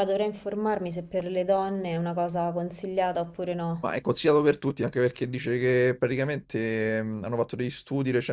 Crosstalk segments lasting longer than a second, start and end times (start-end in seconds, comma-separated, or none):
none